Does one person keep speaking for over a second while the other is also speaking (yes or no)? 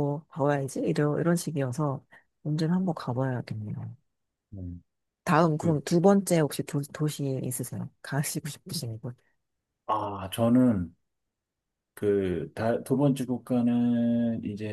no